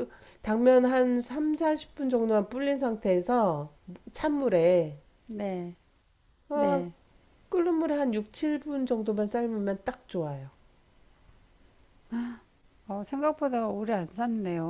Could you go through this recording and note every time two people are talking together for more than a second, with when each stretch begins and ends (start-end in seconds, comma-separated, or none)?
none